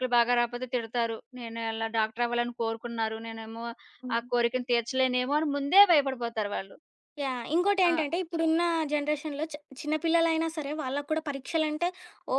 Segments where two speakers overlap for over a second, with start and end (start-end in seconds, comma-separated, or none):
none